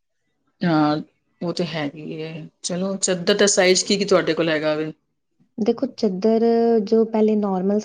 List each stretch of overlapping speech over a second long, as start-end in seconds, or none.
none